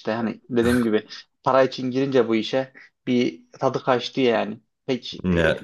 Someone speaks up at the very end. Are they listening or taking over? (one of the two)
listening